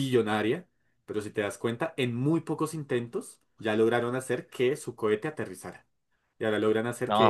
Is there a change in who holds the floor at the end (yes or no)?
no